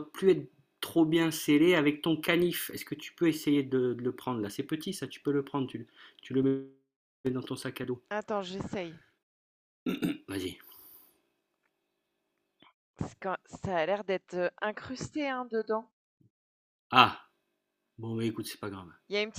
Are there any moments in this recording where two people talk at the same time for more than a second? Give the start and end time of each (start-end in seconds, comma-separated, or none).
none